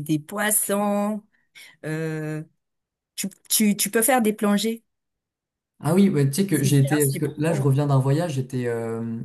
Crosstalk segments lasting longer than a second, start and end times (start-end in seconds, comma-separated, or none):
6.5-7.7